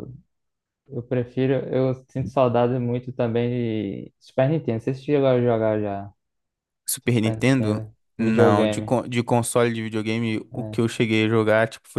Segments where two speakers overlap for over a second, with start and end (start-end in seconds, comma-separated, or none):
7.0-9.0